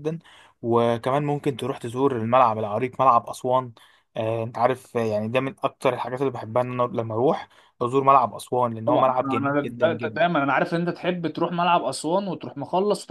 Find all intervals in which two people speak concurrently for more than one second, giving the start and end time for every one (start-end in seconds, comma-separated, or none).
8.8-10.2